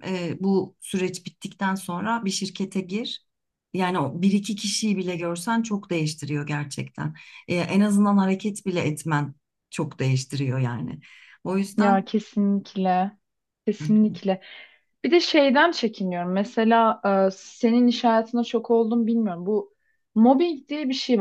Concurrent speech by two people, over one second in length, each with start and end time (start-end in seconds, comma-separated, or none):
none